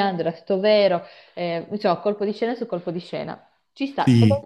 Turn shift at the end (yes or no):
no